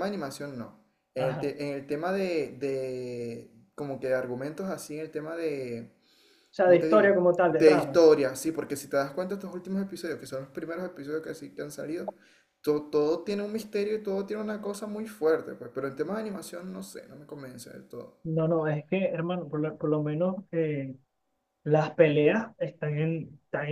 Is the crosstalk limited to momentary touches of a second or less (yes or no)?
no